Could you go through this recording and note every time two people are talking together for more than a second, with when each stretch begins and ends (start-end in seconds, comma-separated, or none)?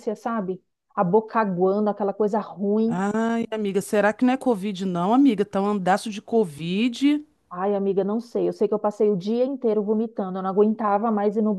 none